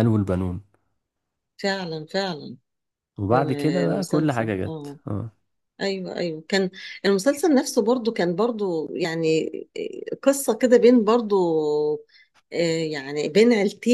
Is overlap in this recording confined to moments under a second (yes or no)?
no